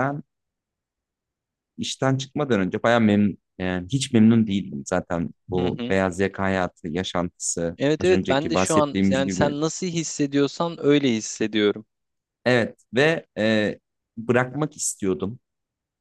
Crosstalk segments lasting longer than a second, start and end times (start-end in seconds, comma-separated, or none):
7.8-9.5